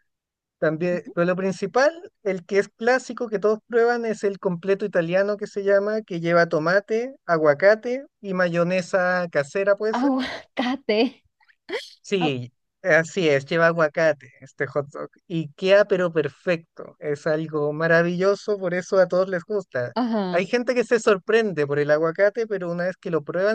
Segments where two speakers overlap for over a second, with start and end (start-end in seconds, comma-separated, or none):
none